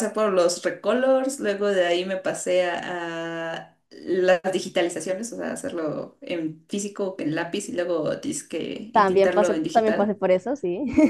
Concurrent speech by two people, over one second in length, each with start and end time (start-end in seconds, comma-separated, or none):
8.9-10.2